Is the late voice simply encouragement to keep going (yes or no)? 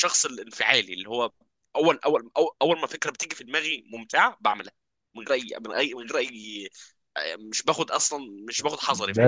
no